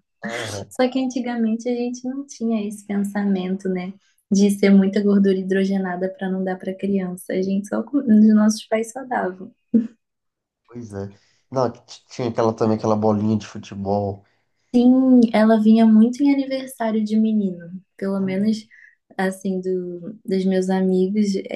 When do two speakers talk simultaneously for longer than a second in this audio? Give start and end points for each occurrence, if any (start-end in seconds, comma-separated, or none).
none